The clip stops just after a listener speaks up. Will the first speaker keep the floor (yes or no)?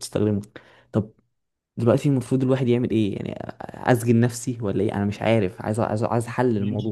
no